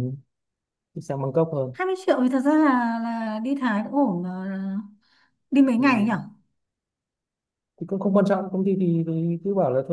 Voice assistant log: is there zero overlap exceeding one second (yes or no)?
yes